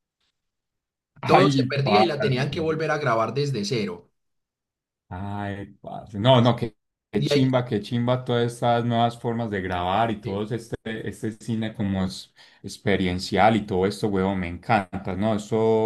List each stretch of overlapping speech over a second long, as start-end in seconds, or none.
1.2-2.5